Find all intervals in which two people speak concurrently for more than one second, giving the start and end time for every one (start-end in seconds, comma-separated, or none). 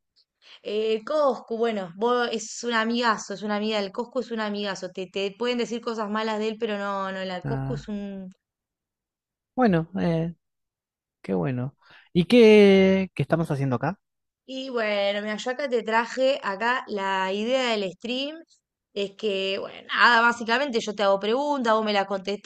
none